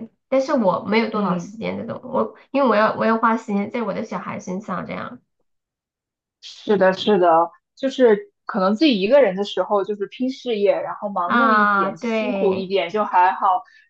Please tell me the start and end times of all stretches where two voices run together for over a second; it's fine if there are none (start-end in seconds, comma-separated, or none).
11.2-12.7